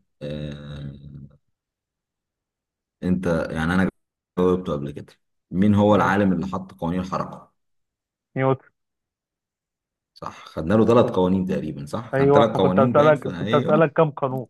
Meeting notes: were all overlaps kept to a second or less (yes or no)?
no